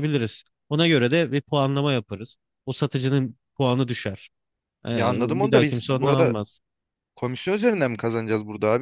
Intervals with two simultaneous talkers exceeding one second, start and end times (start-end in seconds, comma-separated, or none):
4.9-6.3